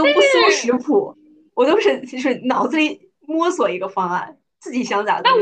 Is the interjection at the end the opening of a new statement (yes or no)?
yes